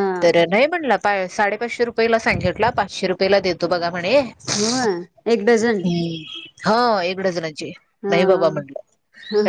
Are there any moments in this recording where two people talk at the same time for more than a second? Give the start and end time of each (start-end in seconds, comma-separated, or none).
none